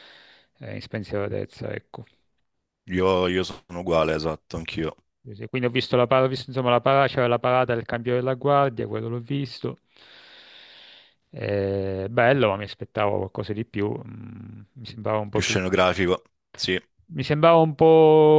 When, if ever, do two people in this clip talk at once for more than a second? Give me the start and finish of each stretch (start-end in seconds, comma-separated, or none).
none